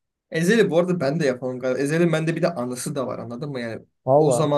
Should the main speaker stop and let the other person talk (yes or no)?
no